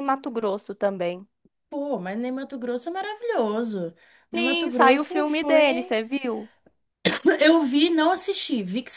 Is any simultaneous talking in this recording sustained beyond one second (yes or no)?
yes